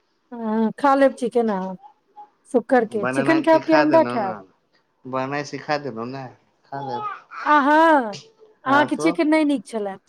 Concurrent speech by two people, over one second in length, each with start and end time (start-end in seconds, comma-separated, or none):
none